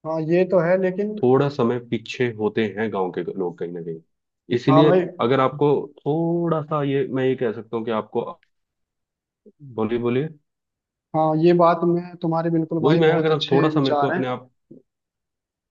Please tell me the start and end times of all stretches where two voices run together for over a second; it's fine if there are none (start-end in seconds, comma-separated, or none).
12.8-14.2